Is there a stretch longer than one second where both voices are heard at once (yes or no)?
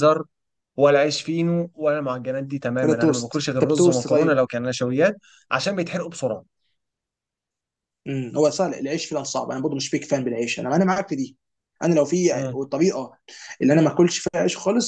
yes